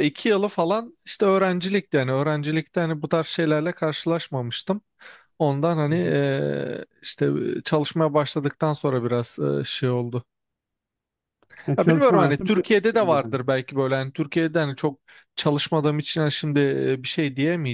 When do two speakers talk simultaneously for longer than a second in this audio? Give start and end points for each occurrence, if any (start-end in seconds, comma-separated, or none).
11.8-13.3